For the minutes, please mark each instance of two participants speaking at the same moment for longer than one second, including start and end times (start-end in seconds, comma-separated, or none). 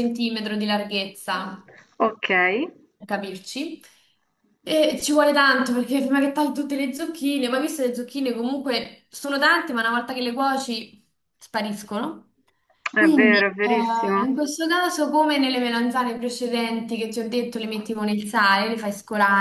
13.1-14.3